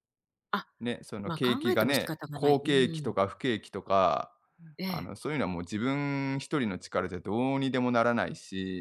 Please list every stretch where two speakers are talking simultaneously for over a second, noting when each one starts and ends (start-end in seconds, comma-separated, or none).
1.2-3.1